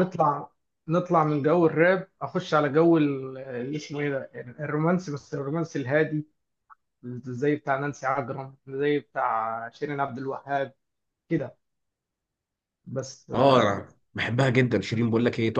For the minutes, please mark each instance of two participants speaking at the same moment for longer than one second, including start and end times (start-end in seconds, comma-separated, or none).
none